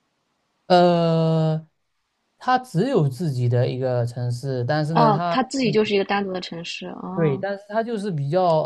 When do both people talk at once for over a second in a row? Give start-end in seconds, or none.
none